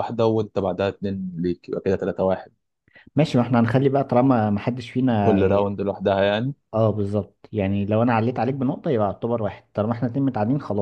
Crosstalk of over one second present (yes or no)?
no